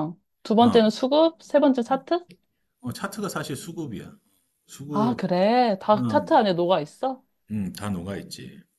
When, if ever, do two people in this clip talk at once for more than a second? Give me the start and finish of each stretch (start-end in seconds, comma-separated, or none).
none